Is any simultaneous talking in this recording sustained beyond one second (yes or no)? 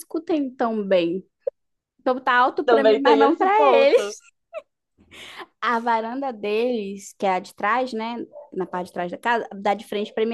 yes